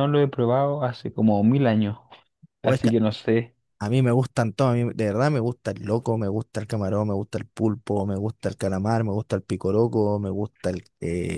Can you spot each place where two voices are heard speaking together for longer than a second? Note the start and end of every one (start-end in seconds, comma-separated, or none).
none